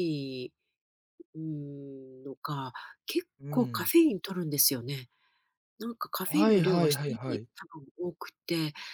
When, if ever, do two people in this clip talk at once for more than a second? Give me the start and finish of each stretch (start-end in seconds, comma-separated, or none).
6.2-7.5